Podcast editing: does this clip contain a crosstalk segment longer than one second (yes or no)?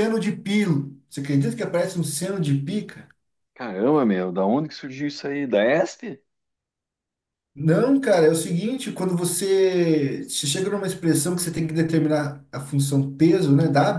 no